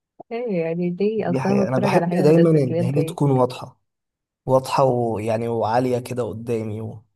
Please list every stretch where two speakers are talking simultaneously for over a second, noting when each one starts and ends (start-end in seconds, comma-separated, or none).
1.2-3.2